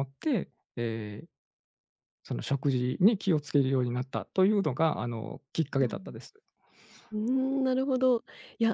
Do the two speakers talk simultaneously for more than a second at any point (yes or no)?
no